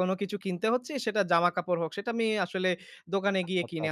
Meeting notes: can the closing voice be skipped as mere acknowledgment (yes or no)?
yes